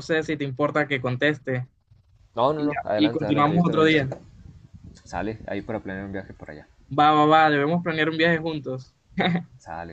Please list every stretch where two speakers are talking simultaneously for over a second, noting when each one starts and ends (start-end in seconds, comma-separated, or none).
2.6-4.1